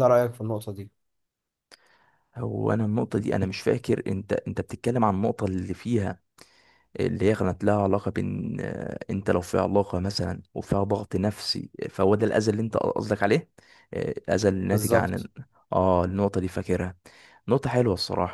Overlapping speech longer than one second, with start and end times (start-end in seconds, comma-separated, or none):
none